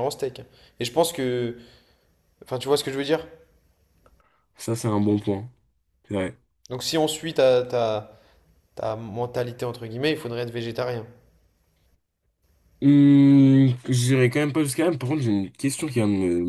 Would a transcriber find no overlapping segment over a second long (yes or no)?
yes